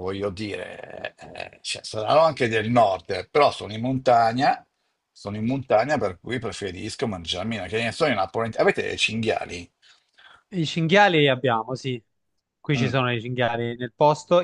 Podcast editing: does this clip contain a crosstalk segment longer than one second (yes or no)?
no